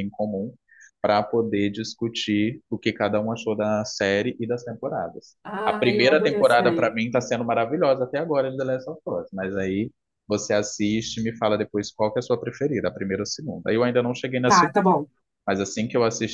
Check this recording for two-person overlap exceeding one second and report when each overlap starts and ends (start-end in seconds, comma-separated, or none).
5.4-6.9